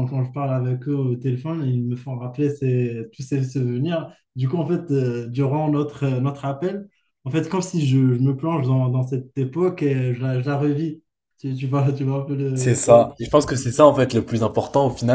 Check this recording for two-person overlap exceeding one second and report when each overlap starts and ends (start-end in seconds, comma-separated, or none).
none